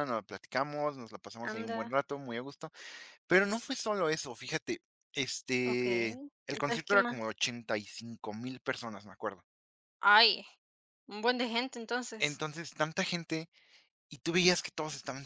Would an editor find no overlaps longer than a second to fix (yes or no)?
no